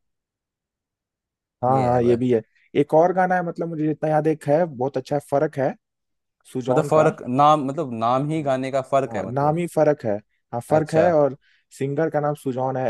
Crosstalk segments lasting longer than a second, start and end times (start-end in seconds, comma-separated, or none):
none